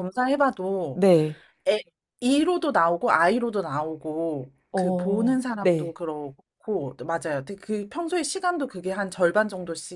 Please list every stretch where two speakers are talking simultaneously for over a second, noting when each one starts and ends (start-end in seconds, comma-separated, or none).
4.7-6.0